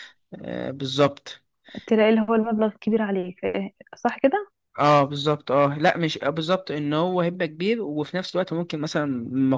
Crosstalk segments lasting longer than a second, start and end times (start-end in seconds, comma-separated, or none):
none